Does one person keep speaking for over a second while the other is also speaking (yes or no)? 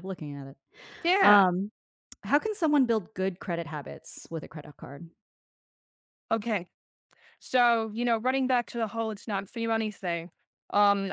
no